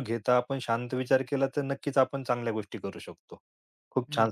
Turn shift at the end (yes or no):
no